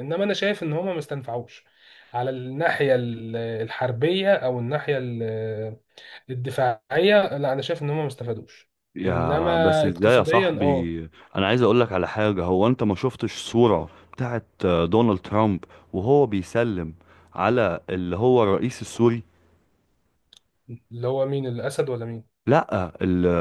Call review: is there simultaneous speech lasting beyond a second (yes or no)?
yes